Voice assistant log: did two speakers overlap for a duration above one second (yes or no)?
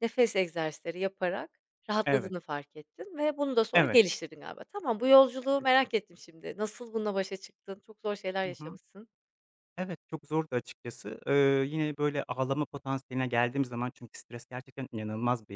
no